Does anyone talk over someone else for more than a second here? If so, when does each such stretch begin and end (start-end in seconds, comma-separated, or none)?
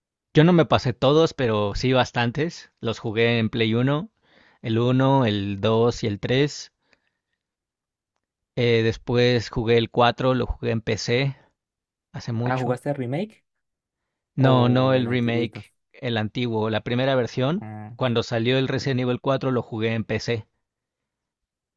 14.4-15.6